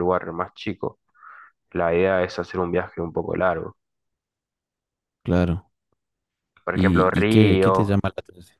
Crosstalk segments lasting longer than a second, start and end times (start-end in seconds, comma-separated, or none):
6.7-8.0